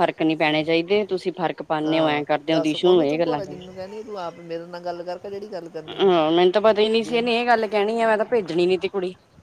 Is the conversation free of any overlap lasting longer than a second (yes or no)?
no